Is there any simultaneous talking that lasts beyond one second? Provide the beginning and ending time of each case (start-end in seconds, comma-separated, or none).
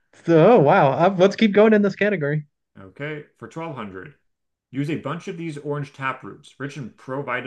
none